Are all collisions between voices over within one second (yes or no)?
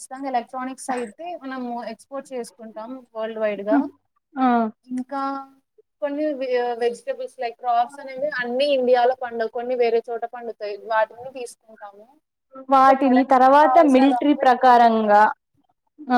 no